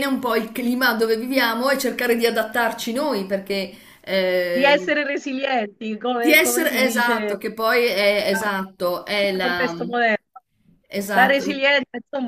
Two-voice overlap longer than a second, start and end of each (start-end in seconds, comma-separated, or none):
6.1-7.3, 8.3-9.7